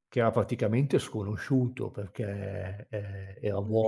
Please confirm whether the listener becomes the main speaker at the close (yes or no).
no